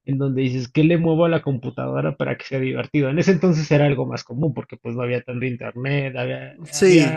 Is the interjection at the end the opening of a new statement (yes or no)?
yes